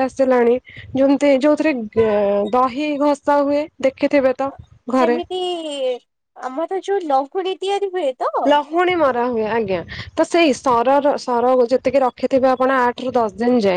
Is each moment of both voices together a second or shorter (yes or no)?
yes